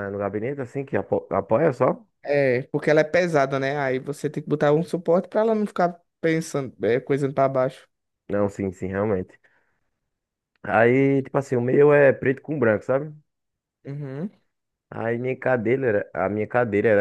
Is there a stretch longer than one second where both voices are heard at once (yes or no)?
no